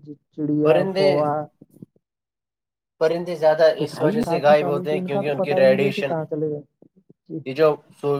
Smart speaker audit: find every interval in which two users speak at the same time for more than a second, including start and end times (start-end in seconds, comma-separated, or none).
3.8-6.1